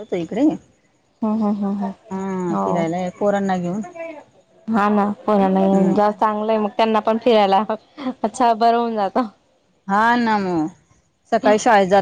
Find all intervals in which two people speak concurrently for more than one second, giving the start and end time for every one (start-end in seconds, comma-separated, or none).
none